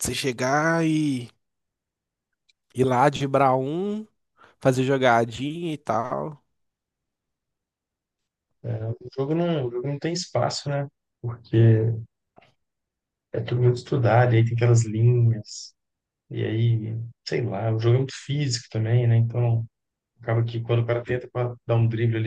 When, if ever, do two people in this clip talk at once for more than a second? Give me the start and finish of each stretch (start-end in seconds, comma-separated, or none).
none